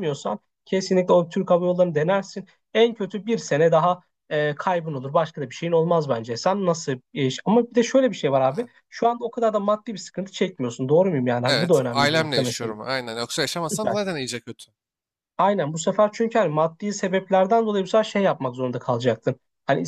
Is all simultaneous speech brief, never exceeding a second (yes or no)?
no